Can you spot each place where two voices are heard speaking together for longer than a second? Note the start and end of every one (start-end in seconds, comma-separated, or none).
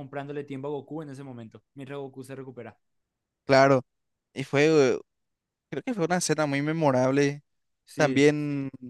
none